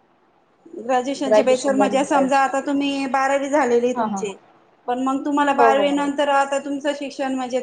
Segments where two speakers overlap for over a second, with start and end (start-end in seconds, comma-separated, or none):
1.2-2.5